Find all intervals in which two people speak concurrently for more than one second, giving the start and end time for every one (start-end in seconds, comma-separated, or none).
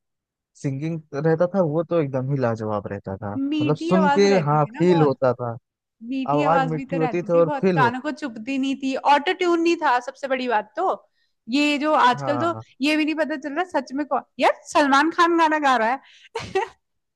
3.4-5.2, 6.3-8.0